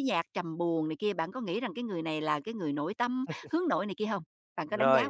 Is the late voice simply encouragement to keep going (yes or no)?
no